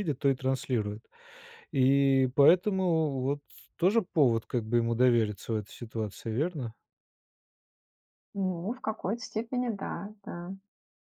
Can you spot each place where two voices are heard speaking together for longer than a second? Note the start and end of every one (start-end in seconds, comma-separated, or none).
none